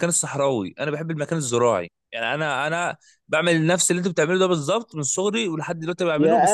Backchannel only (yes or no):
no